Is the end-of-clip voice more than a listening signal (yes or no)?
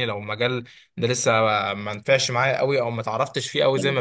no